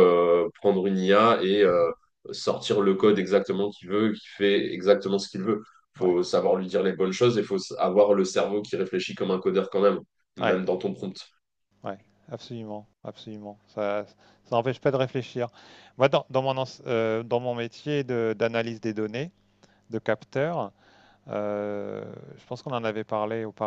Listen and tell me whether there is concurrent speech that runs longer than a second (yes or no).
no